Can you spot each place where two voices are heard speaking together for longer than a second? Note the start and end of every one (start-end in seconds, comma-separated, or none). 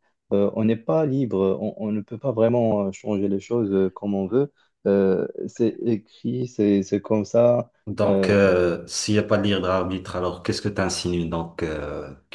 none